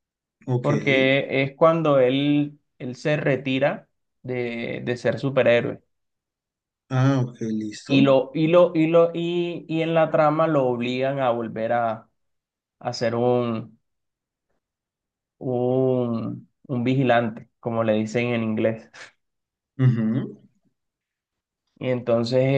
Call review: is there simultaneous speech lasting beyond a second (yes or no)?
no